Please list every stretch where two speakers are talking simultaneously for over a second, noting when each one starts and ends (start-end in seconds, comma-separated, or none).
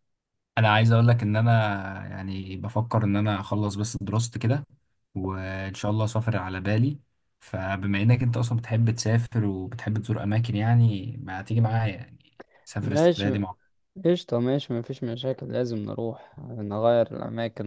none